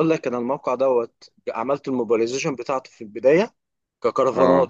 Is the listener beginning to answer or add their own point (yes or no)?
no